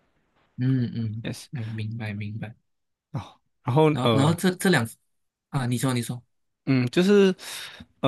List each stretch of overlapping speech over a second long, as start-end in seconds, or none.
none